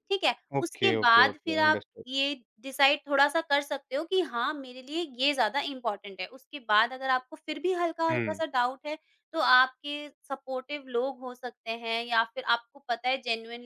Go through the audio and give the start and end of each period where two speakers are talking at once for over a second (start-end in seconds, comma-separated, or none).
0.6-2.0